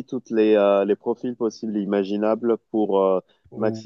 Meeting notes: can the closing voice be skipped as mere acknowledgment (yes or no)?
yes